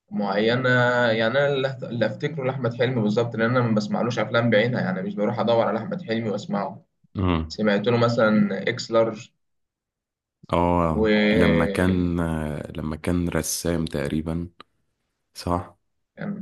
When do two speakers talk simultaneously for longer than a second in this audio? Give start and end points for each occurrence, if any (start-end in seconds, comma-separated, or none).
none